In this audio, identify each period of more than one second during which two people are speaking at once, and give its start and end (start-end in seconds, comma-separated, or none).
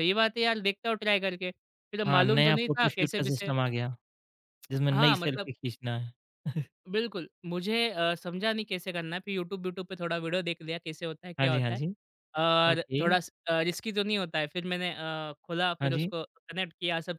2.1-3.5